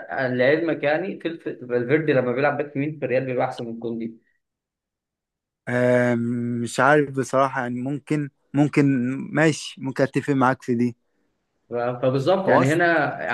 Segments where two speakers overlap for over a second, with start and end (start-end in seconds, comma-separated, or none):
none